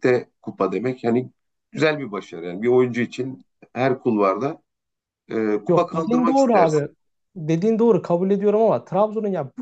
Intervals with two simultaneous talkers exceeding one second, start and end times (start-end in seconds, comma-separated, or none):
5.7-6.9